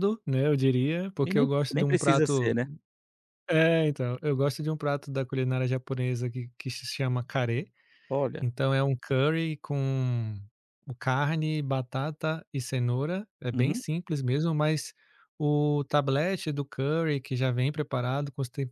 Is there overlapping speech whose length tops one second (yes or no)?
yes